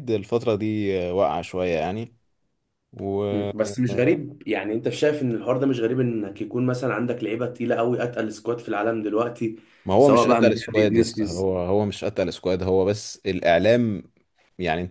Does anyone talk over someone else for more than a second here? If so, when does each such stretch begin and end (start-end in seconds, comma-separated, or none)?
10.0-11.5